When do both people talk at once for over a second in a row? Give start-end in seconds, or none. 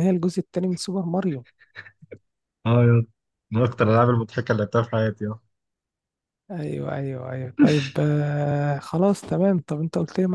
none